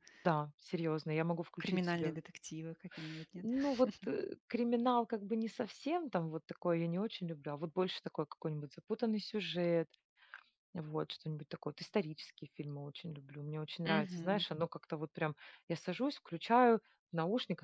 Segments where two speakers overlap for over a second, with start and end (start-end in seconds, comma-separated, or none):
none